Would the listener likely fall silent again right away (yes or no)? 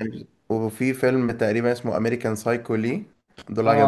no